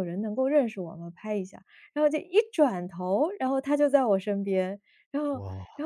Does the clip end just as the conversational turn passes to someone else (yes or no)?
no